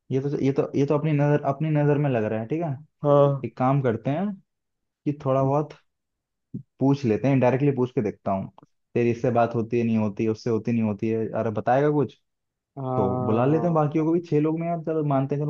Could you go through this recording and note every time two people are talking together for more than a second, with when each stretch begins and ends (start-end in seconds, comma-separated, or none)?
12.9-14.2